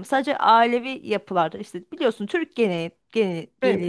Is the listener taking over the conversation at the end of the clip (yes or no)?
no